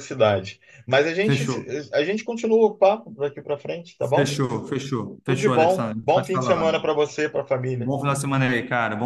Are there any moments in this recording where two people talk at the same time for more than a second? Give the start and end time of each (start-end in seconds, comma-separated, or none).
5.2-6.9